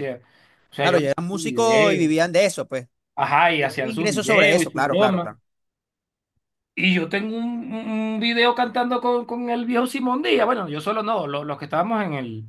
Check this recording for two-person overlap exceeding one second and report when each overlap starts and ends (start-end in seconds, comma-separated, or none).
0.8-2.1, 3.6-5.3